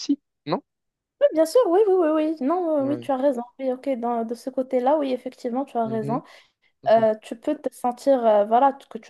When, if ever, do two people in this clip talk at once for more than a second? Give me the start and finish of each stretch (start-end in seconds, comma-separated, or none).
none